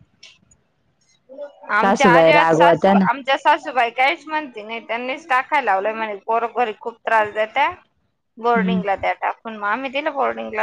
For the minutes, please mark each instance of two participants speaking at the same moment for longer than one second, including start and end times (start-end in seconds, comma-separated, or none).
1.8-3.0